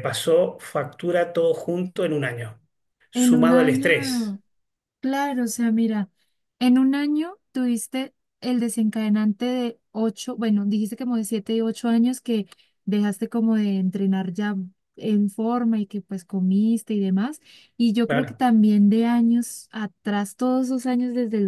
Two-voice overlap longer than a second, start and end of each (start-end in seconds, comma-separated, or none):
3.1-4.4